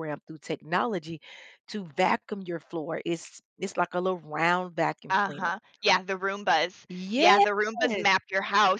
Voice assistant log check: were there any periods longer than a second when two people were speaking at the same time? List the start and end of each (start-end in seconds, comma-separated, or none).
none